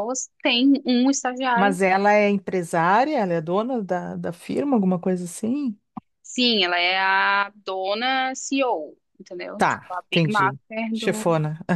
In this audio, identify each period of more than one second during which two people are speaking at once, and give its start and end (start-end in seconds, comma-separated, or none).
9.6-11.3